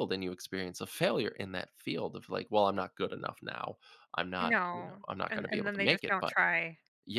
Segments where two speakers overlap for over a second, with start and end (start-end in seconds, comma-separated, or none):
4.4-6.3